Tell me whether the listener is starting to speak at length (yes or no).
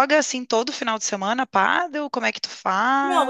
yes